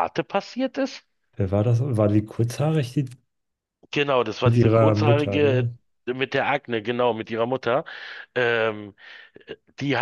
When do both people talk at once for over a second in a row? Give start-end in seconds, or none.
4.4-5.7